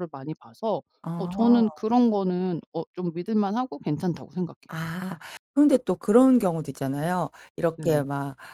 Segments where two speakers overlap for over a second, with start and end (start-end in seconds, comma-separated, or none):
none